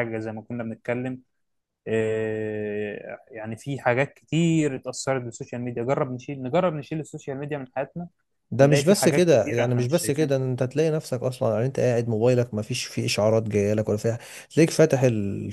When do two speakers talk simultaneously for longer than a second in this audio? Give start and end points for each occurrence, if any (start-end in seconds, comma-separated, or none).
8.6-10.3